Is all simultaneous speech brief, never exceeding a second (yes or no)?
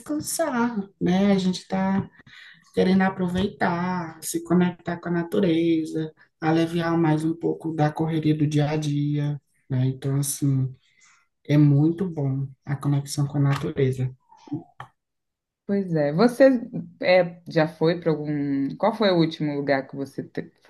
yes